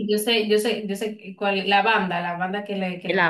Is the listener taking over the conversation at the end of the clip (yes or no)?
yes